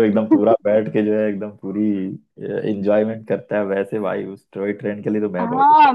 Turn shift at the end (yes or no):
yes